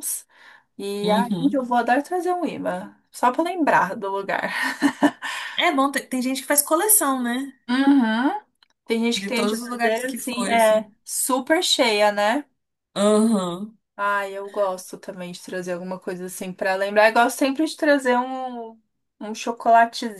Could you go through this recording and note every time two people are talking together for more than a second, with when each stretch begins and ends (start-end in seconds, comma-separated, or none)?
9.1-10.9